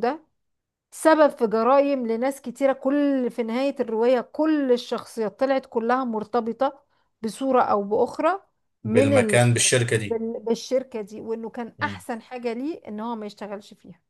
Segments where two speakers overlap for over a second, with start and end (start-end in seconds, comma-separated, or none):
none